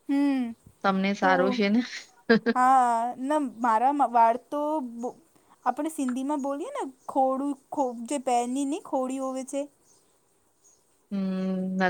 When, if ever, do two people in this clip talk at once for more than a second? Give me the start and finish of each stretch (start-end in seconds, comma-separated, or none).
none